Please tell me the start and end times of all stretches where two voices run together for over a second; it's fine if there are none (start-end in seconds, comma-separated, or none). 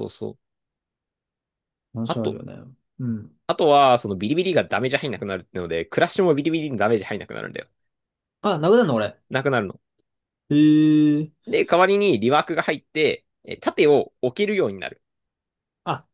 none